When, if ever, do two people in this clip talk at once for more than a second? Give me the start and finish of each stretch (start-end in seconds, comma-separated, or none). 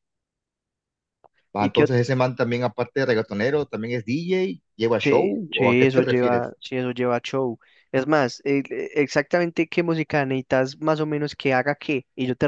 5.0-6.5